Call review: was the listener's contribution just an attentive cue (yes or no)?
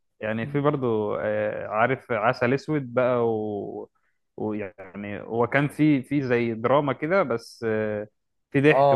no